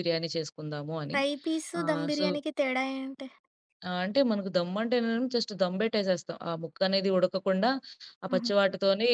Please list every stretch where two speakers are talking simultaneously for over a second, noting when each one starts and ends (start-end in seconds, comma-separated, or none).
none